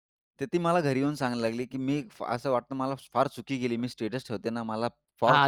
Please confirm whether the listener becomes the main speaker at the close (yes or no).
yes